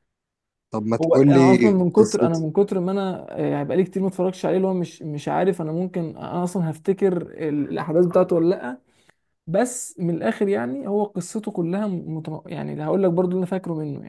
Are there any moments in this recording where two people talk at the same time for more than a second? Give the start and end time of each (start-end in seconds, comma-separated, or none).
1.0-2.4